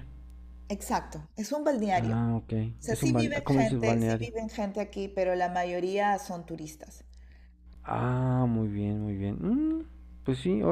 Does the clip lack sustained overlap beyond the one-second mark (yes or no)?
no